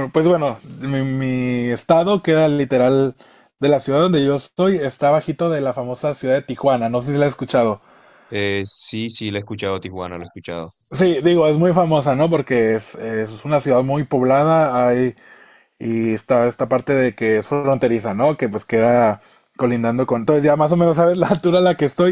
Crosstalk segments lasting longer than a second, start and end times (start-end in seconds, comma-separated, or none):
none